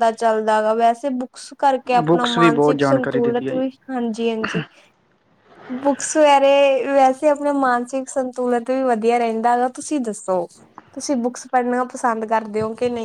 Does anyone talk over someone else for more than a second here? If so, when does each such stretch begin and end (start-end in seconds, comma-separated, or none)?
2.1-3.6